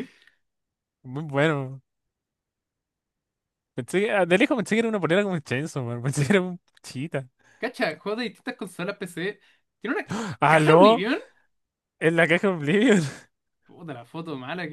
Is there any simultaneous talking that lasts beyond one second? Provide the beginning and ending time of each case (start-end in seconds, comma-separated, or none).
none